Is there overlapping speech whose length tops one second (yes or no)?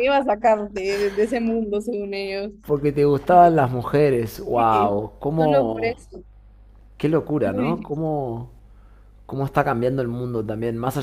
yes